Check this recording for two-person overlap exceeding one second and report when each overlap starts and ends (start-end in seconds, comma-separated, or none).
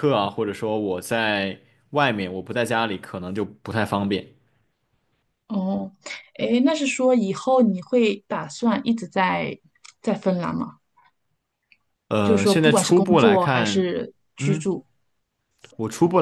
12.2-13.9